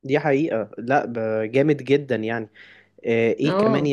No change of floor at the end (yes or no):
yes